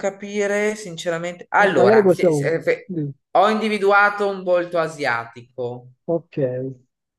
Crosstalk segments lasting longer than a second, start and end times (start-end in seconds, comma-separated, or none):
1.6-2.9